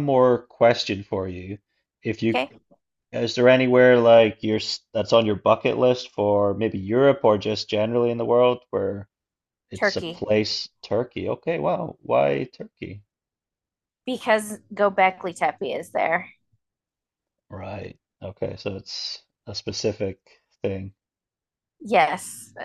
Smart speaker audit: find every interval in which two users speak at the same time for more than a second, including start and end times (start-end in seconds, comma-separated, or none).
none